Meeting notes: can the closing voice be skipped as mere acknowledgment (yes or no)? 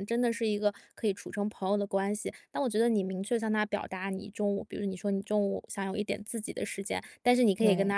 yes